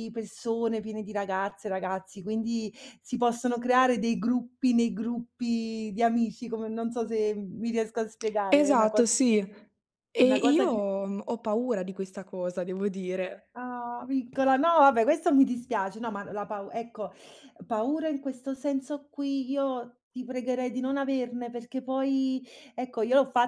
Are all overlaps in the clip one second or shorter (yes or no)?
yes